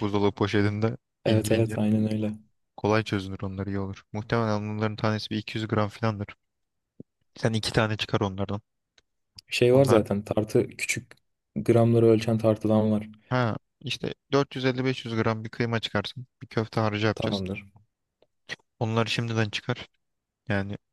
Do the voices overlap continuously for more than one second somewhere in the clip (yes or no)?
no